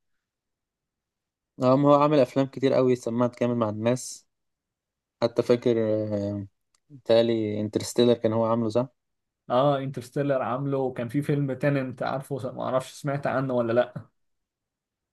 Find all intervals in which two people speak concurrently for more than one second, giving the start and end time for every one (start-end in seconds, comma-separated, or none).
none